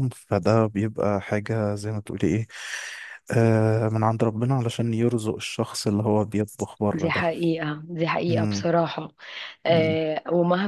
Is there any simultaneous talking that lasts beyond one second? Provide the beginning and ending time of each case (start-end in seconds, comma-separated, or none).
none